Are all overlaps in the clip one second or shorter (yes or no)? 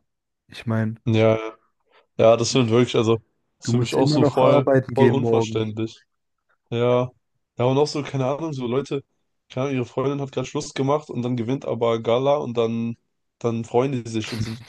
no